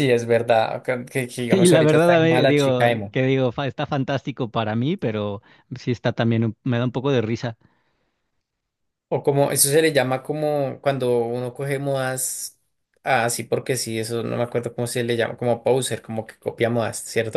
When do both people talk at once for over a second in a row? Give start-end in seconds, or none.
1.5-3.2